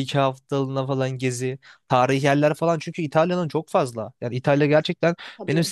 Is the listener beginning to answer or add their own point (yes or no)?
no